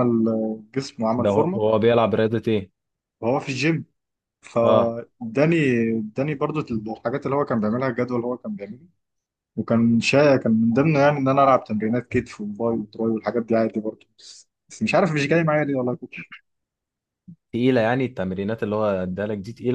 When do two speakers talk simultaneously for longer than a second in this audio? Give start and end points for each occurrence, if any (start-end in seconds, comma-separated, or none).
none